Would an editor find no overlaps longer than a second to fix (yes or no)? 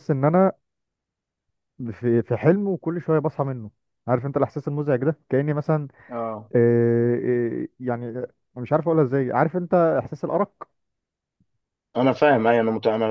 yes